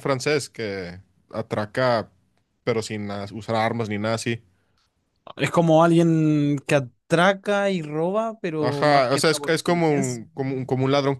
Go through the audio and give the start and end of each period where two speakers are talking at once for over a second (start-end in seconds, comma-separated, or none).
8.6-10.2